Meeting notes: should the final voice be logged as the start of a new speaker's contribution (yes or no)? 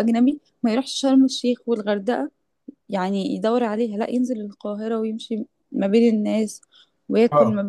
yes